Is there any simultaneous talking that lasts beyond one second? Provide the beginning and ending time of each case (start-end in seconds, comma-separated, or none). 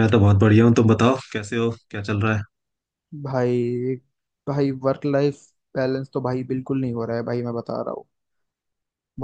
none